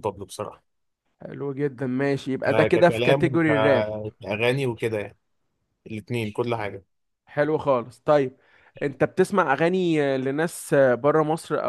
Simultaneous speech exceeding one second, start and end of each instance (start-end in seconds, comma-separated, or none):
2.5-3.9